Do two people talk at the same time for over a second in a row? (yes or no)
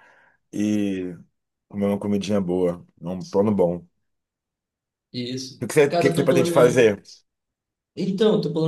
yes